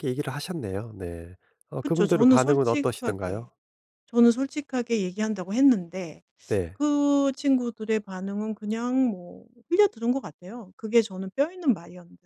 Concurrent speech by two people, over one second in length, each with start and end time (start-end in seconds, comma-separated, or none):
1.8-3.5